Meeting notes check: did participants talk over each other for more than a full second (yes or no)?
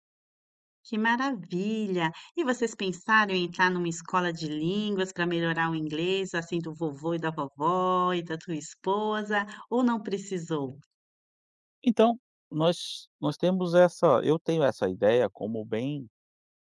no